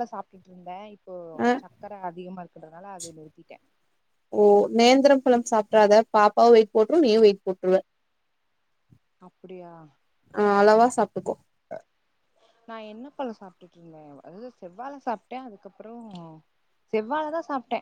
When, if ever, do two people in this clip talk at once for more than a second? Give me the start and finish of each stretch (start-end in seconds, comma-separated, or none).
none